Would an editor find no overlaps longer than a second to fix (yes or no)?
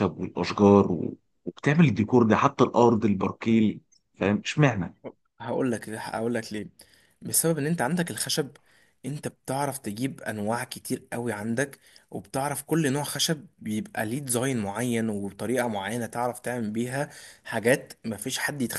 yes